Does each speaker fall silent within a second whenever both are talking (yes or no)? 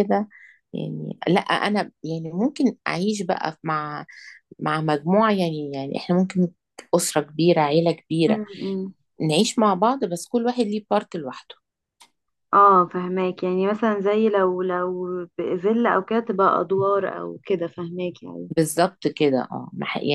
yes